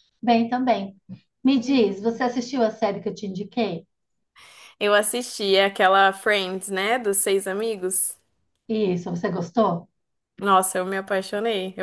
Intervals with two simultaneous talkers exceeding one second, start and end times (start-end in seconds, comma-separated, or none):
none